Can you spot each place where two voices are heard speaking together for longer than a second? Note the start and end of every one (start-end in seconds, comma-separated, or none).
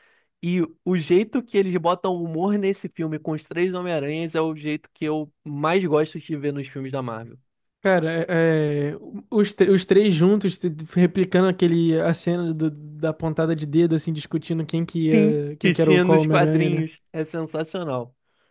15.1-16.8